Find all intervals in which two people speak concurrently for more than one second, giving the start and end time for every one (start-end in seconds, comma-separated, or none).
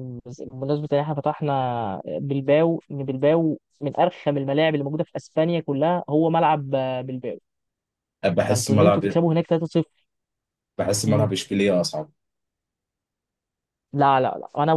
none